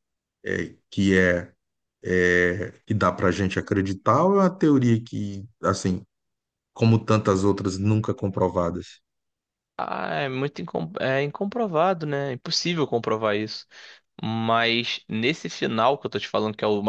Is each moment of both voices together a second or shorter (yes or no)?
yes